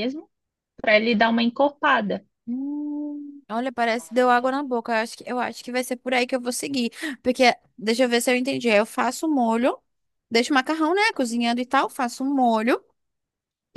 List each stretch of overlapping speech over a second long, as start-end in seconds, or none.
none